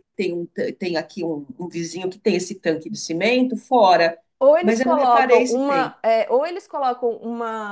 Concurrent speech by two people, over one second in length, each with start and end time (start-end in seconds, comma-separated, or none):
4.6-5.9